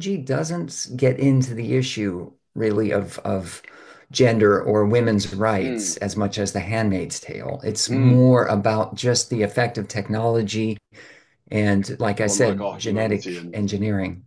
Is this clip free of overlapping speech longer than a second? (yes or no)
no